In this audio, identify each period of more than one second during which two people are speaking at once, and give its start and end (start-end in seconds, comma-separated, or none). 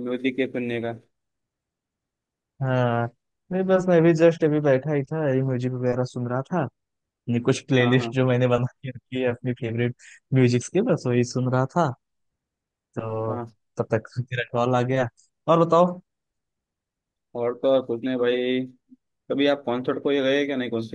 none